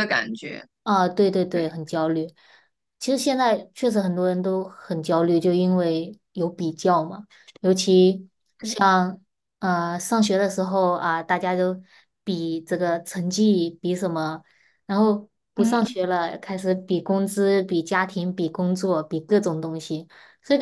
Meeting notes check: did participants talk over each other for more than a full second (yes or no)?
no